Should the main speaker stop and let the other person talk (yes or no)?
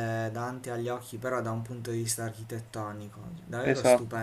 no